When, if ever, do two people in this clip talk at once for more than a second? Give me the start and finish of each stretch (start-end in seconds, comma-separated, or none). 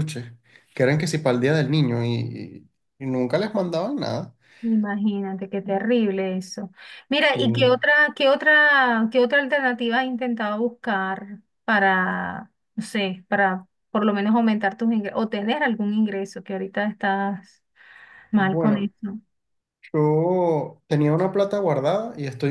none